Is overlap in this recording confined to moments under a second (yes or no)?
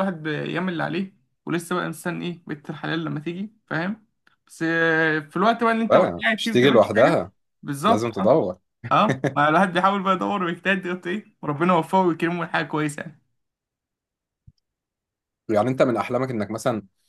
no